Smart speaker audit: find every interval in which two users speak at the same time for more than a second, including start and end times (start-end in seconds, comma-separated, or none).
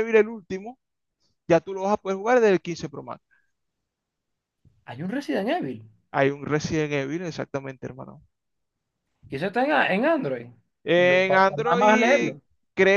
10.9-12.3